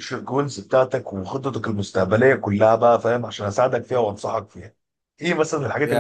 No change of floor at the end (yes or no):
no